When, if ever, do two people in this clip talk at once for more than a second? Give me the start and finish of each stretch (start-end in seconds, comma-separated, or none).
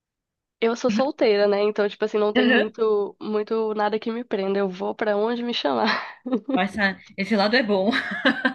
none